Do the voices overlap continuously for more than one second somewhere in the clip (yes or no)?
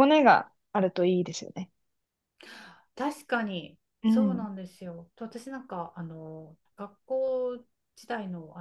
no